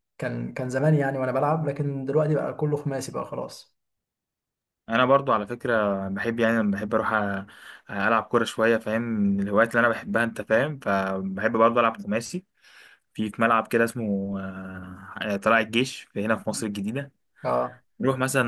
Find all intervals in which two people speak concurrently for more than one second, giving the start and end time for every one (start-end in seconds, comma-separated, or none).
none